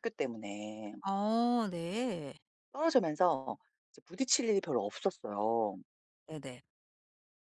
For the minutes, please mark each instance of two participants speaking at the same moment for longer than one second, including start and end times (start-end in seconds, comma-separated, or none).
none